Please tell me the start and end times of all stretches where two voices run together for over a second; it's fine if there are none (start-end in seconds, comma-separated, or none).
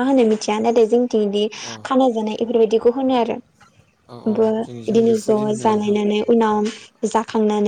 4.3-6.0